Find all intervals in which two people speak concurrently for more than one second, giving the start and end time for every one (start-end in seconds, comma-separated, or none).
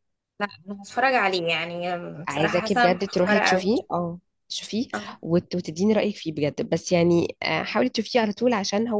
2.3-3.6